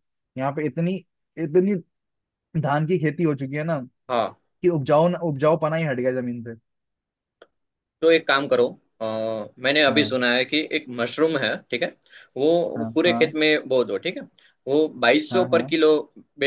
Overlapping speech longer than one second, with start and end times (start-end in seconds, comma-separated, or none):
none